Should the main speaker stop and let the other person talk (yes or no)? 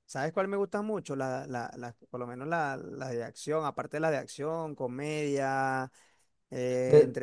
no